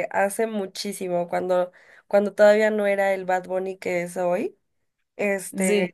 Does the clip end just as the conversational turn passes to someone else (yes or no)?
no